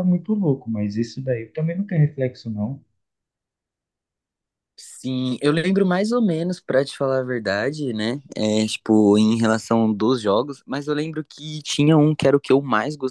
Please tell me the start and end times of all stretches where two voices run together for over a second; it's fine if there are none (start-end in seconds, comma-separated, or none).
none